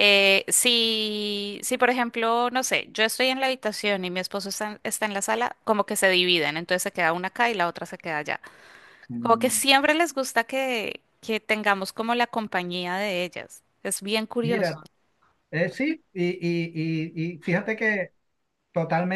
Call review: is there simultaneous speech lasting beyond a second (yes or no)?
no